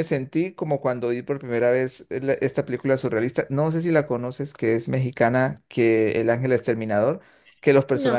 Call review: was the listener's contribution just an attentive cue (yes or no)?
yes